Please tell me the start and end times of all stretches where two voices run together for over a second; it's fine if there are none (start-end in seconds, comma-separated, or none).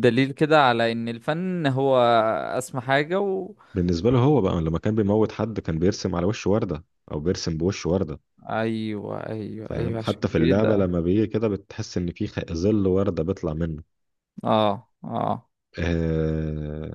9.7-10.9